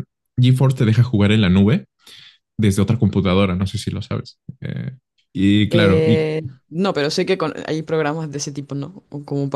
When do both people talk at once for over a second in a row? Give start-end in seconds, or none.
none